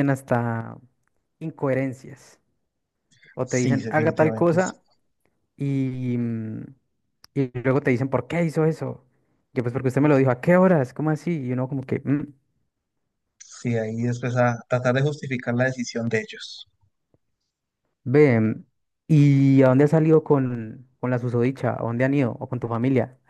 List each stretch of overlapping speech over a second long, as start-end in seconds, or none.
3.4-4.8